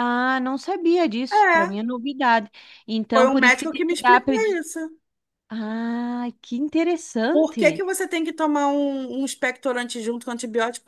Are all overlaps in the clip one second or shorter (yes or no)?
no